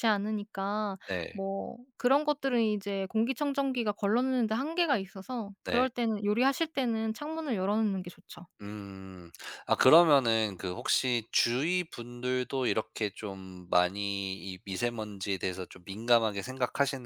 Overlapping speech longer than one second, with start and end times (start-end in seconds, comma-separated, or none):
none